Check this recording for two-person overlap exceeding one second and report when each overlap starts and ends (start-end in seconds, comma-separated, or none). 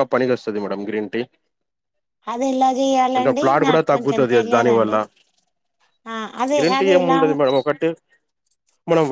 3.1-5.0